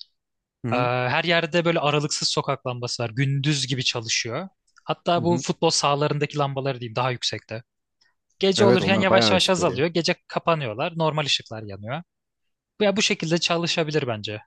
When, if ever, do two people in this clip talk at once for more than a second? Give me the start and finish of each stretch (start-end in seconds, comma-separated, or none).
8.6-9.8